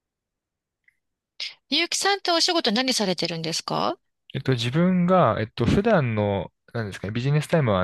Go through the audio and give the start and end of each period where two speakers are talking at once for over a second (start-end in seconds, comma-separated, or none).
none